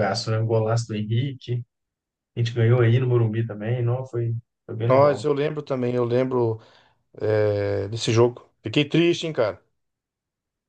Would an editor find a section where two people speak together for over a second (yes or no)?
no